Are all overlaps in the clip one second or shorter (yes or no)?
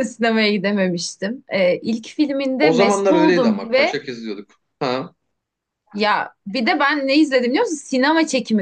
no